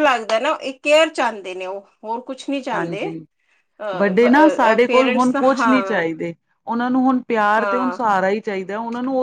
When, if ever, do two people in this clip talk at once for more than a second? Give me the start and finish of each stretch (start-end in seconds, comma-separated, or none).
4.0-5.8